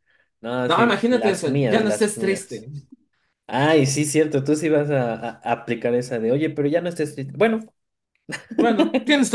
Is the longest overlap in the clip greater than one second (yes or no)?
yes